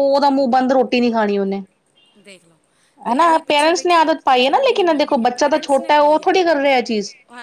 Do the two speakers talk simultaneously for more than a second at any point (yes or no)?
yes